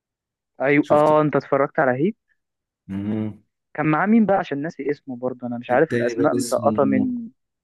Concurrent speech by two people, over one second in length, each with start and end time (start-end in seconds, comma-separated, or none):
5.7-7.1